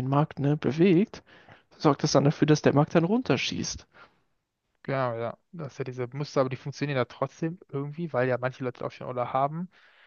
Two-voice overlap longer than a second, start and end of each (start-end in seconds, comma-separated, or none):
none